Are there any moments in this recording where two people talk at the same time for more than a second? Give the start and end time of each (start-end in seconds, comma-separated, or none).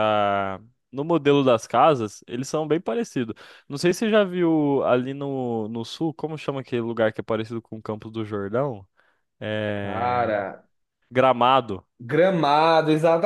none